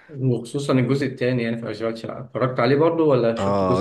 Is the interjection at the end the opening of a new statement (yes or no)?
yes